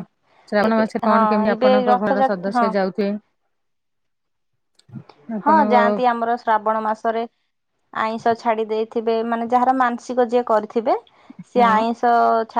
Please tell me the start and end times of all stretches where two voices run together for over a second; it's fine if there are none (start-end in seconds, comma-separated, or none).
0.7-2.6